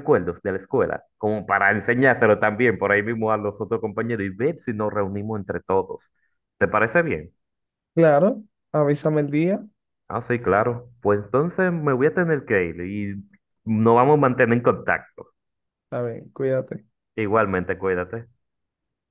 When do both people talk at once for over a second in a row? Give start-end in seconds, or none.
none